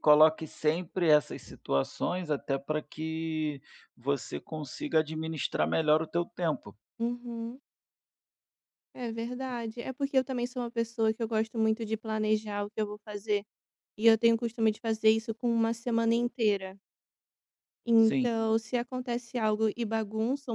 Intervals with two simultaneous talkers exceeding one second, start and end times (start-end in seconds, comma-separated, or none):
none